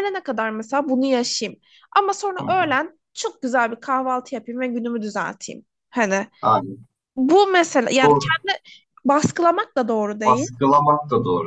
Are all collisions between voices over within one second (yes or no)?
yes